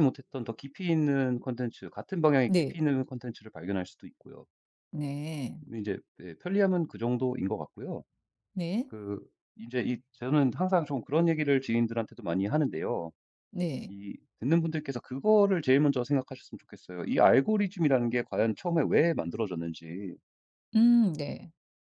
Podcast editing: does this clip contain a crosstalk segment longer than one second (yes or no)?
no